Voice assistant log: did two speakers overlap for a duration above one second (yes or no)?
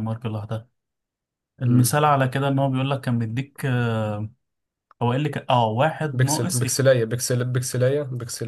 no